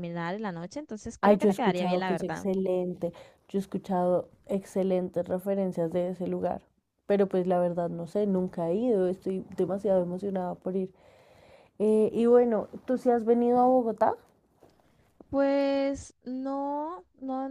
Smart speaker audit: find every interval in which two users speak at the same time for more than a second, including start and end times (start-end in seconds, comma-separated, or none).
1.2-2.5